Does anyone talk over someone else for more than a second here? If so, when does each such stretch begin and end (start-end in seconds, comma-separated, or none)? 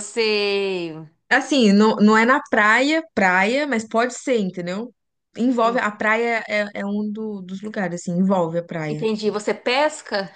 none